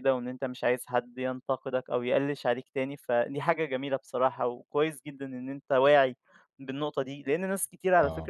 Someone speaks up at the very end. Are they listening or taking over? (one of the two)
listening